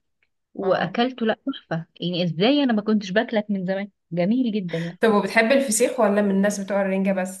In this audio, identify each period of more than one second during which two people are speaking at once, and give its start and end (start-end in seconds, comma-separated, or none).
none